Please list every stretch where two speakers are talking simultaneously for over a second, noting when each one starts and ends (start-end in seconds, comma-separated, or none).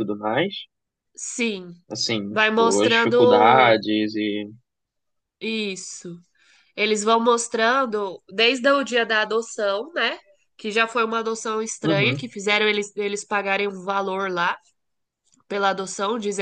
2.3-3.8